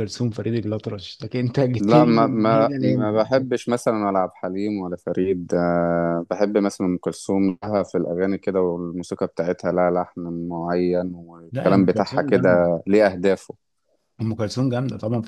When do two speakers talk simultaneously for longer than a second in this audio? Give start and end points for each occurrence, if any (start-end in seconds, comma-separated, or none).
1.8-3.1, 11.5-12.8